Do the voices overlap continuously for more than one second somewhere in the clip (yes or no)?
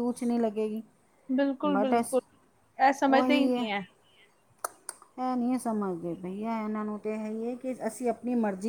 no